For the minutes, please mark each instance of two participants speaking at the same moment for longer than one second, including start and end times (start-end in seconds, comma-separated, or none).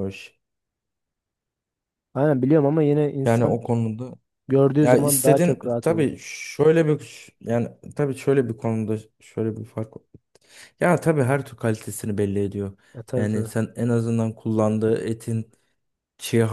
4.8-6.0